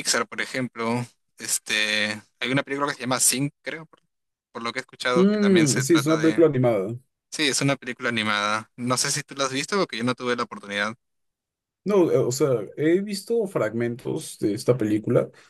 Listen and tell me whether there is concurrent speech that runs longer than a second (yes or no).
yes